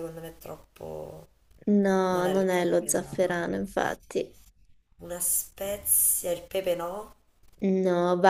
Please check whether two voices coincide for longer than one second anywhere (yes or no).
yes